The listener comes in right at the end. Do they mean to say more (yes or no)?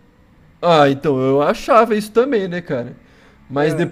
no